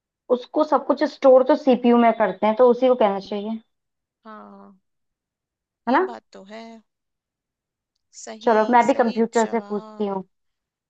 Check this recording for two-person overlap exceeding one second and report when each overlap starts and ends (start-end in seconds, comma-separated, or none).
8.4-10.2